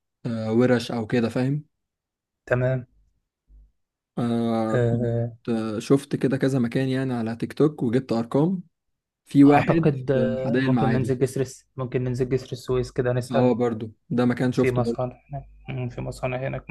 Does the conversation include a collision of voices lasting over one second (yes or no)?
yes